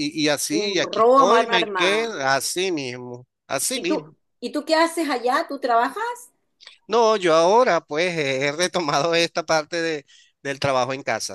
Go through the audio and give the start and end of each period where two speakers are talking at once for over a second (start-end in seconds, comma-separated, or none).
0.6-2.1